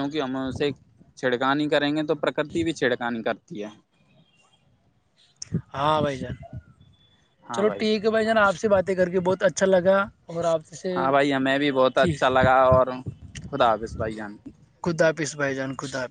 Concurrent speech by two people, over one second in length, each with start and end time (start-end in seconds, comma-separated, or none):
none